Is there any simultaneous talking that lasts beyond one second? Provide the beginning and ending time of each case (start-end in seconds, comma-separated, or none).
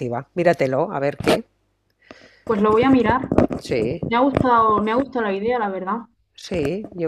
none